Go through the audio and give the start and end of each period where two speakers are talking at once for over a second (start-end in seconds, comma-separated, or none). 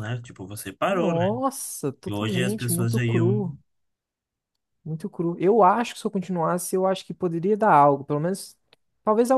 2.1-3.5